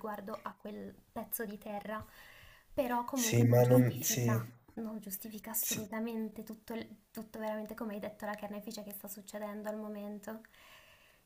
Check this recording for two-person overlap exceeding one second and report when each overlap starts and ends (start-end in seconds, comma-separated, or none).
3.1-4.4